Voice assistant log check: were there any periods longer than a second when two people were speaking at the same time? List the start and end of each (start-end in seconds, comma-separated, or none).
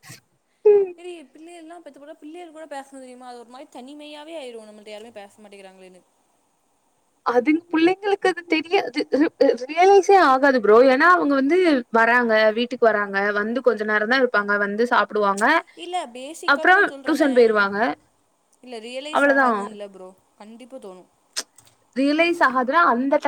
none